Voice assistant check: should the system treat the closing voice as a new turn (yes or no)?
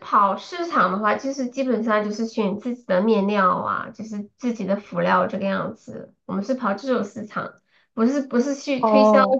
no